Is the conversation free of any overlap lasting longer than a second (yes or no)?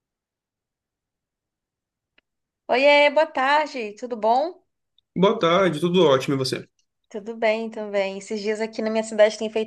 yes